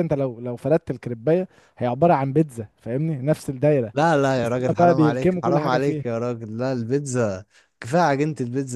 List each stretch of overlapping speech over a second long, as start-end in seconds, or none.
4.4-6.0